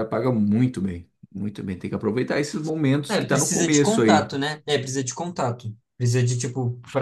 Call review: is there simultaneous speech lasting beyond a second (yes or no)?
yes